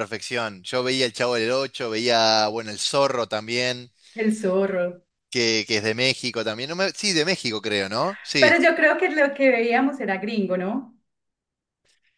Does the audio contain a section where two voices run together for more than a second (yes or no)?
no